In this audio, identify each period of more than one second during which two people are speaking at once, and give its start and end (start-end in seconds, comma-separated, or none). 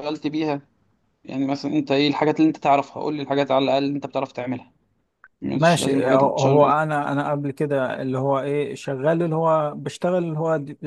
5.5-6.7